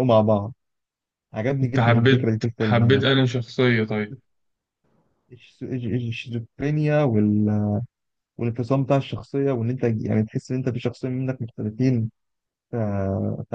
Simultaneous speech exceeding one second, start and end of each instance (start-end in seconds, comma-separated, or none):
1.6-3.0